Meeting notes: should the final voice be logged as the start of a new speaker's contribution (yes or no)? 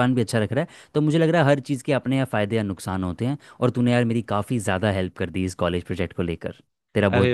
yes